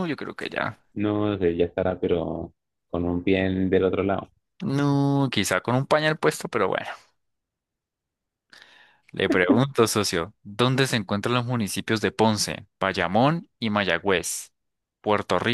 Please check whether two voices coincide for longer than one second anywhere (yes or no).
no